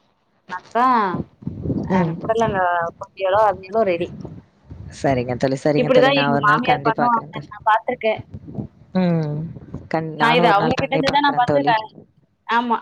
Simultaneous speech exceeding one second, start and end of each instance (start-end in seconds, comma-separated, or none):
5.8-7.5, 10.2-11.7